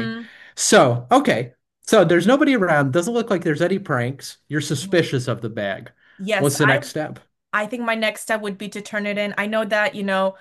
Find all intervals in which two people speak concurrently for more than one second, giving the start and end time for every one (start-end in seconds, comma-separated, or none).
none